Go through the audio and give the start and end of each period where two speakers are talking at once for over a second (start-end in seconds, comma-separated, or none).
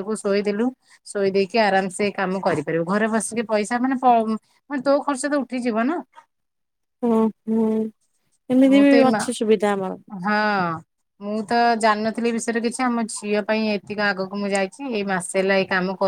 none